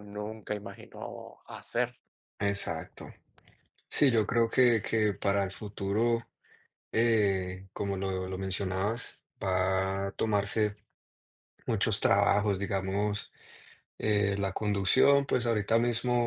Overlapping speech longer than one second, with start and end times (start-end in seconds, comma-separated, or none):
none